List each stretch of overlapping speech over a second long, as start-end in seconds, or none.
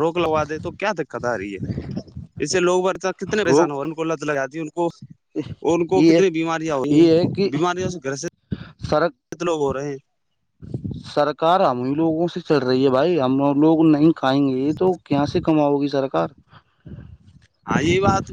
none